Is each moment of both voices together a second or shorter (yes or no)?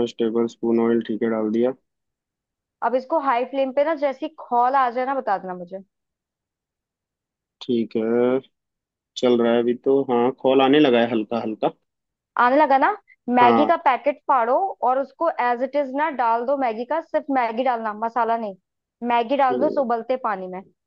yes